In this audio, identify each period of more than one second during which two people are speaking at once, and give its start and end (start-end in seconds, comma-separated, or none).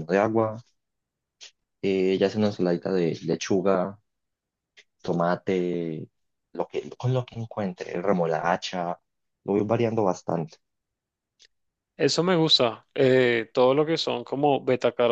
none